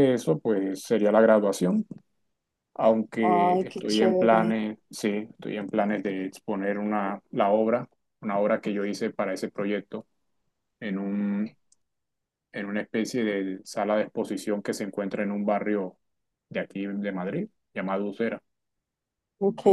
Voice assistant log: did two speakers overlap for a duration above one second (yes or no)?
yes